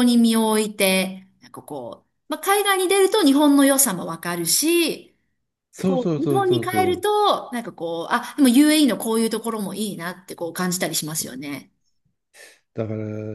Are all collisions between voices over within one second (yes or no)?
no